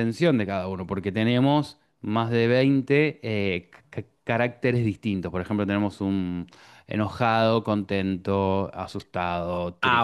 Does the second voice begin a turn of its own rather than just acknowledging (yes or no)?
yes